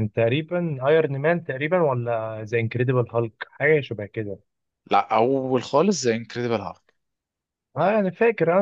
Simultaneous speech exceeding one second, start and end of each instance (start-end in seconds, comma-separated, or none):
none